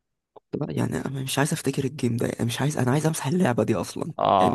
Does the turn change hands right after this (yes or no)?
yes